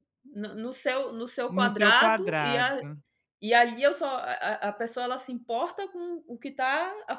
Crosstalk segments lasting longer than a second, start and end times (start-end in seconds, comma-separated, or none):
1.5-2.8